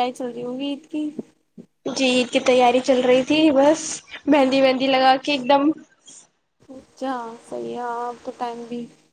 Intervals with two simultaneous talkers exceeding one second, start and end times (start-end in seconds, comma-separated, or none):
none